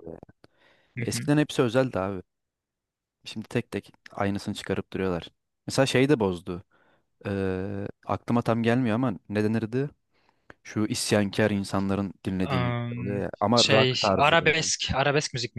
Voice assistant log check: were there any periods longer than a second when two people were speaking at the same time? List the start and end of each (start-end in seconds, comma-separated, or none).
12.4-14.6